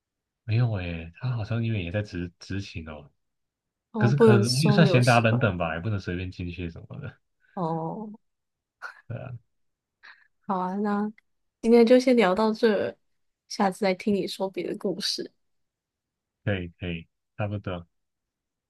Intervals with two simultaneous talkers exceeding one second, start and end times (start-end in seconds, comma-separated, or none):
4.0-5.5